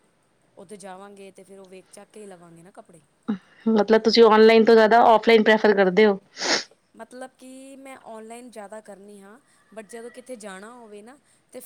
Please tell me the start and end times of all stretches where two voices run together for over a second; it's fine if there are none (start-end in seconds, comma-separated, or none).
none